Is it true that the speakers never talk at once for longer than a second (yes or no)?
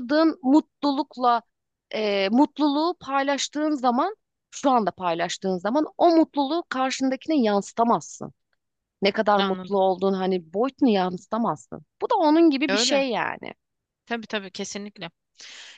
yes